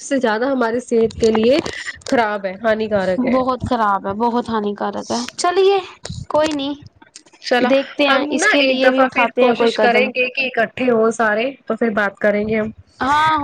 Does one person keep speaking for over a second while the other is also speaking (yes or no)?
yes